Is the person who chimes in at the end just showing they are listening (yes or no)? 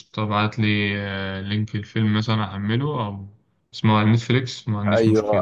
no